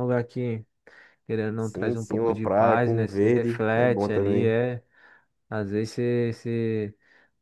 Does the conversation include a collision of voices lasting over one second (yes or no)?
yes